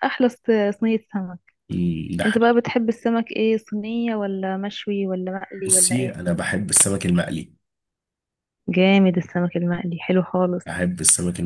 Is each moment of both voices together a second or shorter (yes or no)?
yes